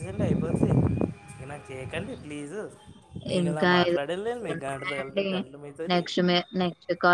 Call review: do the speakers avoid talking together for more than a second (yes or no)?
no